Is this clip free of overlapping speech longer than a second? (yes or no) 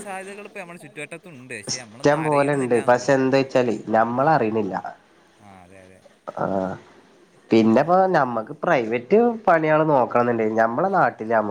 no